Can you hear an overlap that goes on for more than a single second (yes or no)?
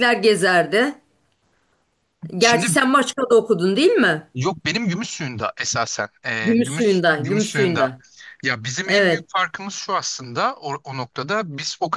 yes